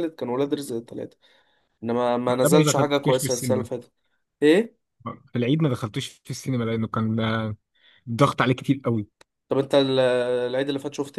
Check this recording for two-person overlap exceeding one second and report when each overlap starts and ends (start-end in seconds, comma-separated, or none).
2.3-3.7